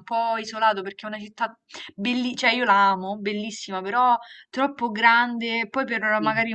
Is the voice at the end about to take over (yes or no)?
no